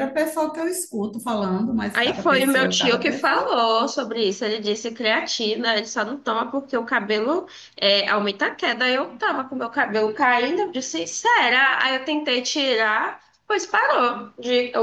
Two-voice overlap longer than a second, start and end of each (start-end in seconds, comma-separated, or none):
1.9-3.6